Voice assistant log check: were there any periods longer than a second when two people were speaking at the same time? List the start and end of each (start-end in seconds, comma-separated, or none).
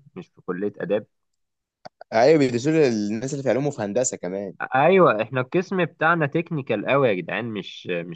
none